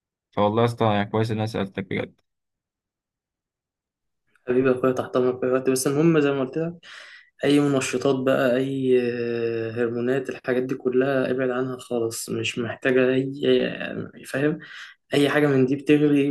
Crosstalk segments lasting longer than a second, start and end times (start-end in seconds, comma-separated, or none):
none